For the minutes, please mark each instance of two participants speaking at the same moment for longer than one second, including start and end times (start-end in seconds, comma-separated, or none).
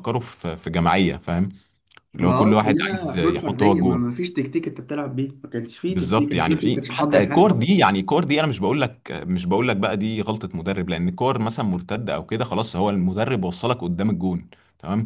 2.1-4.1, 5.9-7.6